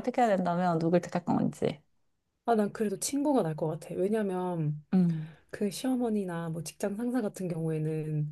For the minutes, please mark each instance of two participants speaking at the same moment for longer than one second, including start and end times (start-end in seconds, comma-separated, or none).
none